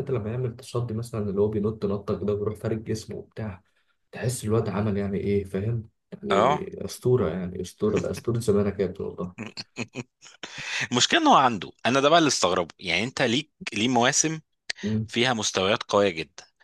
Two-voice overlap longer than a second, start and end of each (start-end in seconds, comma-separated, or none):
none